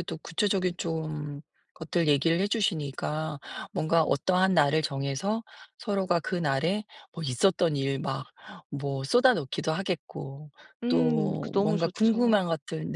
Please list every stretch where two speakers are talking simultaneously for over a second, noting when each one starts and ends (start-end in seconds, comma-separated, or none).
10.9-12.4